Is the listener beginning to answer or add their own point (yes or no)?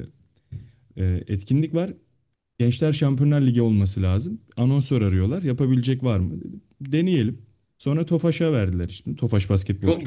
yes